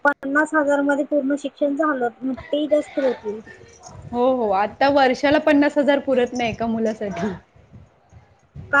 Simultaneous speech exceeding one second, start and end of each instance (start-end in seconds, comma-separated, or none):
none